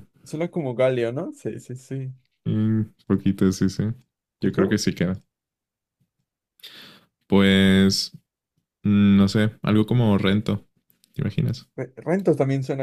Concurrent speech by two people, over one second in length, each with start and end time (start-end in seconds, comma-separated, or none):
none